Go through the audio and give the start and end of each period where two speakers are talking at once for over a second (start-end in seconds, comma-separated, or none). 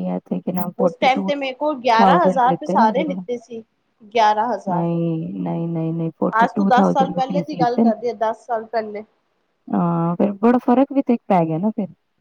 2.0-3.2, 6.4-7.9